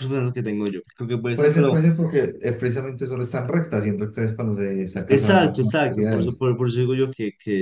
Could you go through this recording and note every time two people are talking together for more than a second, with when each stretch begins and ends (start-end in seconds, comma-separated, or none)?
5.1-6.4